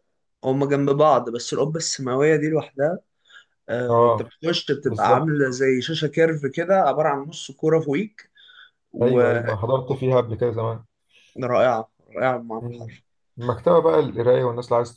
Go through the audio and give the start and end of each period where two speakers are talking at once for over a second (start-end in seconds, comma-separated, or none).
none